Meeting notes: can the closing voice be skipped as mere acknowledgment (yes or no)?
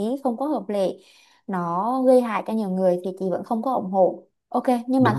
yes